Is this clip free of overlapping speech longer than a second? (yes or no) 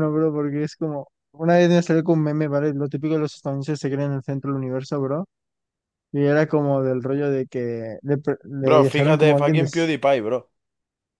no